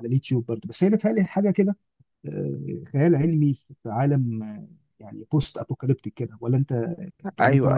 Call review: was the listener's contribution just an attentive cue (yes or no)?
no